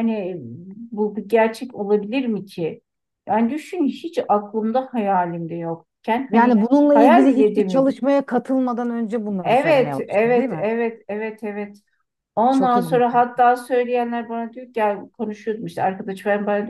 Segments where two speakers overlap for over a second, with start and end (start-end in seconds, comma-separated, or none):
6.3-8.0, 9.4-10.7